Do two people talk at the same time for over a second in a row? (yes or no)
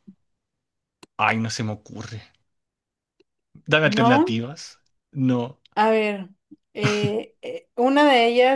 no